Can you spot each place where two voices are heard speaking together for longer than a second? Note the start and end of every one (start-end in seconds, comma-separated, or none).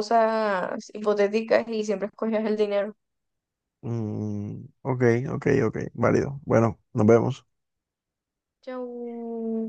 none